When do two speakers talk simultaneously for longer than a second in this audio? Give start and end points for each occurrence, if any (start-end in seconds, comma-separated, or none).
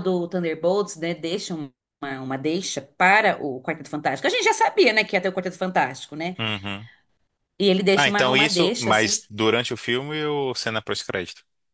7.9-9.2